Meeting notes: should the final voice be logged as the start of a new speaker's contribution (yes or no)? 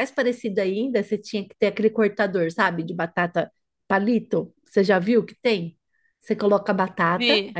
no